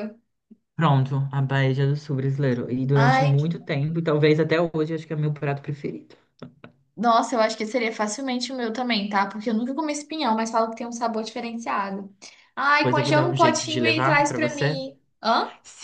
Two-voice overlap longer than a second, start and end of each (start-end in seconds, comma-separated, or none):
12.8-14.8